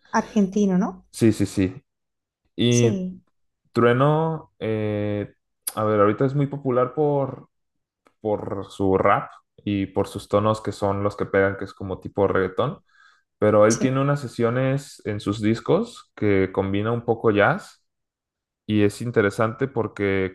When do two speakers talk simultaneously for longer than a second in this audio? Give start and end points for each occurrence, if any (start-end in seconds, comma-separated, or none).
none